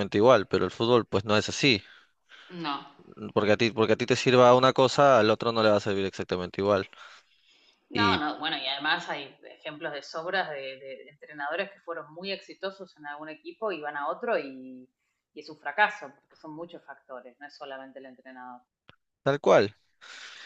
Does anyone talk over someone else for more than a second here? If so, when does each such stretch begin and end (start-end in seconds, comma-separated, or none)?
none